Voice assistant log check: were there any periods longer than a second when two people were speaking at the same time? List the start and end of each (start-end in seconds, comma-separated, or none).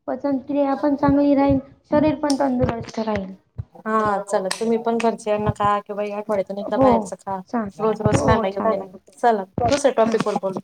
7.5-9.0